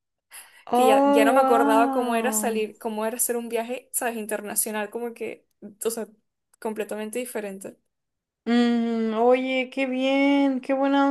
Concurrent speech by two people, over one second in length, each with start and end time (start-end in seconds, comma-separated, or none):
0.7-2.5